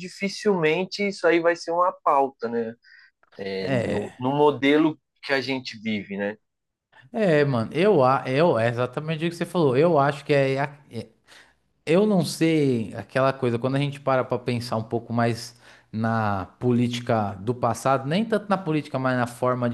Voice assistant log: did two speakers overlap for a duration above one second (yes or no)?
no